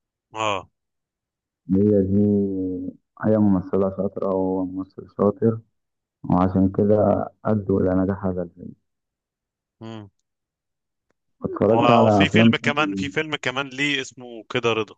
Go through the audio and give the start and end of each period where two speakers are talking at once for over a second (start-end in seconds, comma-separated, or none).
11.7-13.1